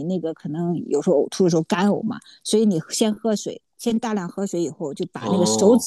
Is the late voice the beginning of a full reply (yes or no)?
no